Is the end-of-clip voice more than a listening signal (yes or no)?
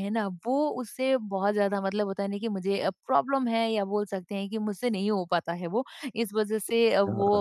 no